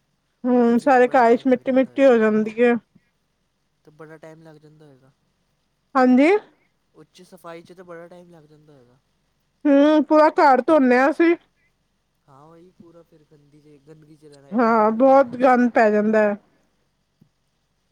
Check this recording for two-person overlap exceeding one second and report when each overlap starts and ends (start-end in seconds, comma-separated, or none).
0.8-2.2